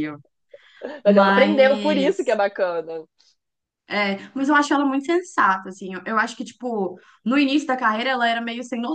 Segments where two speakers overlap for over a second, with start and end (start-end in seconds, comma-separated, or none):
1.0-2.4